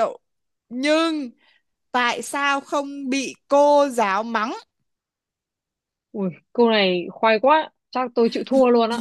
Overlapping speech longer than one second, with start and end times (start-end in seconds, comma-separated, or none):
none